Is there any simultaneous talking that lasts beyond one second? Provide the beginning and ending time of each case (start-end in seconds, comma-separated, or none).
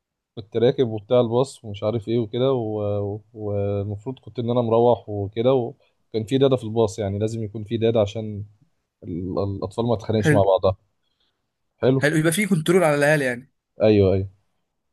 none